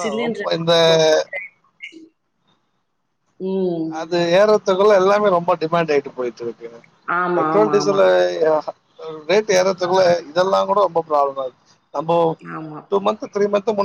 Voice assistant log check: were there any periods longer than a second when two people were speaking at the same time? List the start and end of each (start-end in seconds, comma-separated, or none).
none